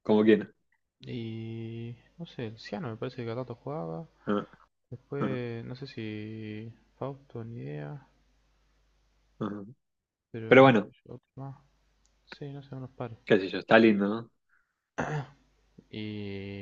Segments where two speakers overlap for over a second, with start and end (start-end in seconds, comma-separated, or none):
none